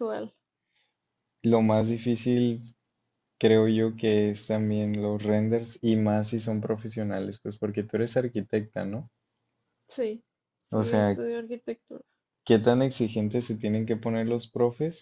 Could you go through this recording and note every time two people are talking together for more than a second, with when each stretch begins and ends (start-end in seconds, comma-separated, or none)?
none